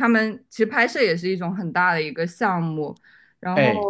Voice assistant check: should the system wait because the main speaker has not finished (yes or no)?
yes